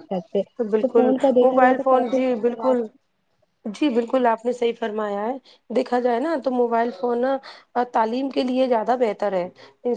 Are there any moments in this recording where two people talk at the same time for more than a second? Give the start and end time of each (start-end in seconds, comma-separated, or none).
0.8-2.8